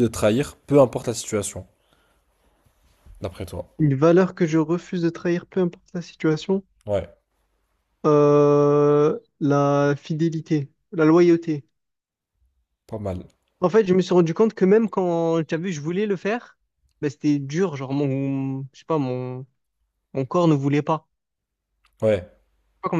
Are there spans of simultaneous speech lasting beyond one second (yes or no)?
no